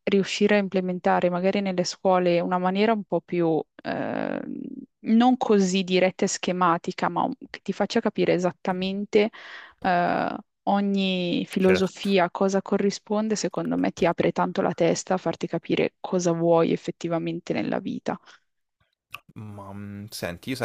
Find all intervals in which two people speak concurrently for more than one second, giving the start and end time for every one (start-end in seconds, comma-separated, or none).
none